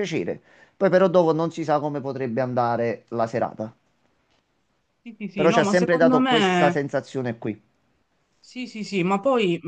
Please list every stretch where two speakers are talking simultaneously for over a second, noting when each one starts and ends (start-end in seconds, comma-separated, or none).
5.4-6.7